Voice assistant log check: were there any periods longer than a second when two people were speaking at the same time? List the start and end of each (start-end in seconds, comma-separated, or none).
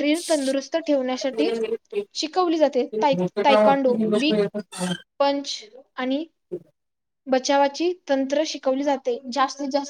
3.1-4.4